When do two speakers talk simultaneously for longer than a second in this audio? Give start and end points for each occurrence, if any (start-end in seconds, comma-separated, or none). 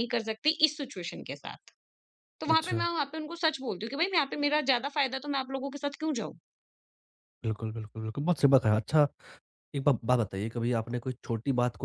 none